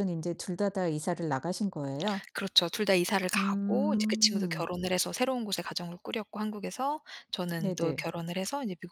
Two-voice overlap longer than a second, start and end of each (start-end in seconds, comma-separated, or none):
3.4-4.7